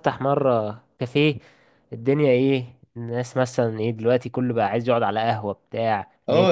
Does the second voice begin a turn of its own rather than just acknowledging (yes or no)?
yes